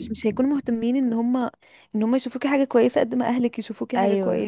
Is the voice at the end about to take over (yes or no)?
yes